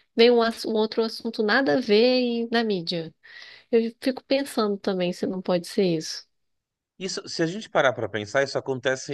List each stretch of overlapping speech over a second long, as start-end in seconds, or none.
none